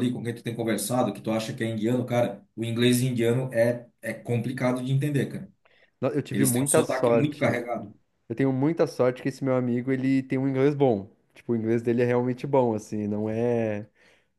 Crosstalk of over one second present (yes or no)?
yes